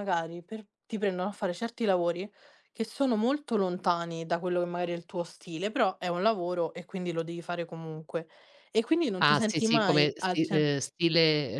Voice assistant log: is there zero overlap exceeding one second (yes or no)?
no